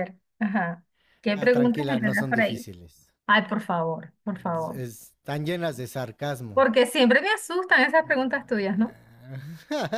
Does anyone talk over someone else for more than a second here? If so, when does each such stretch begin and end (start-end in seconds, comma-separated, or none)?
1.3-2.6